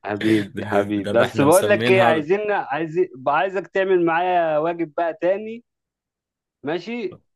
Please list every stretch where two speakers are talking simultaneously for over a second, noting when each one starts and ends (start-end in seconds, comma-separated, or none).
0.5-2.2